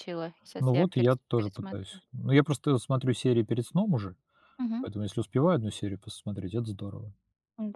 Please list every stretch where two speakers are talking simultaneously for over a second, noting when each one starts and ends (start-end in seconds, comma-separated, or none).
0.6-2.0